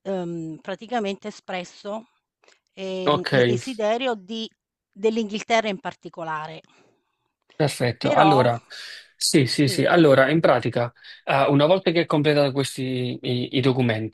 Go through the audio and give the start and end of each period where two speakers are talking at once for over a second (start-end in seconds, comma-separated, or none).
none